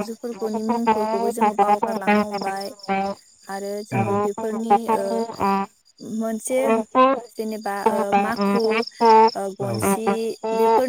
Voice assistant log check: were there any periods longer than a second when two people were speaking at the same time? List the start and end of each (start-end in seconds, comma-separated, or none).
0.5-2.1